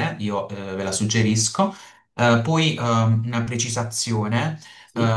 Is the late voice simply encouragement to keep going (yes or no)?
yes